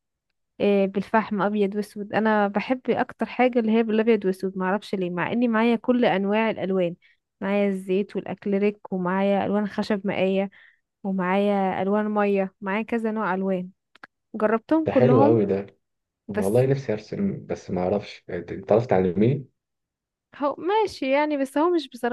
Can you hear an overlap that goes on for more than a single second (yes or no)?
no